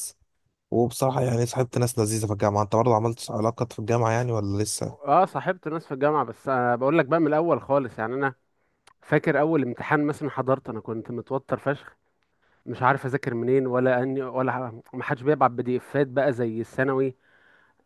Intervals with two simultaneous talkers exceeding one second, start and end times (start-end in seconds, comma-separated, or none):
none